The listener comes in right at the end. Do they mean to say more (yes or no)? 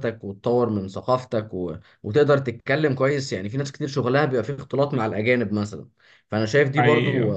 no